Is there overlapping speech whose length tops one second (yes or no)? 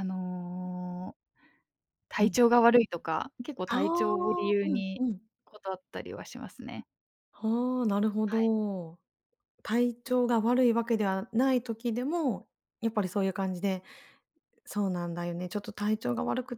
yes